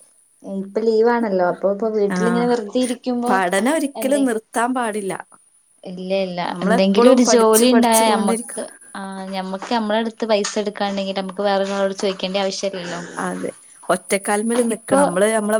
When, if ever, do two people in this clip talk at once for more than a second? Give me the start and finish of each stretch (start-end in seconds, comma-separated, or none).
6.5-8.6